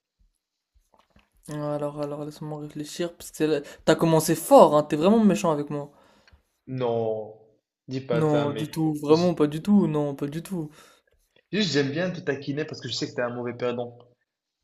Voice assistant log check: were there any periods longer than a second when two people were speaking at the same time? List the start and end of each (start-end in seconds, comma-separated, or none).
8.1-9.3